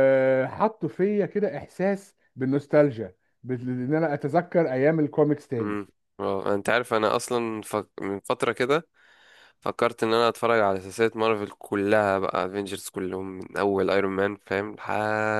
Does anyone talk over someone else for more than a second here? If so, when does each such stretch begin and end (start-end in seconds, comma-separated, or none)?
none